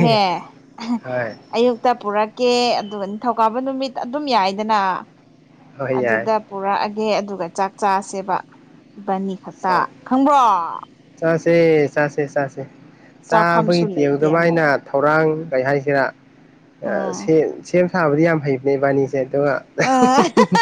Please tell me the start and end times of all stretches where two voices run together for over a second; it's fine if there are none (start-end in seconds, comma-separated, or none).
13.3-14.6